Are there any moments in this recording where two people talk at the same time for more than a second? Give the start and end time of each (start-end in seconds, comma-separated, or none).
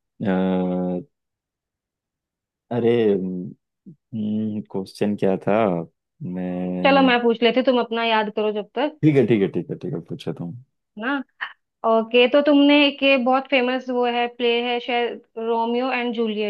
none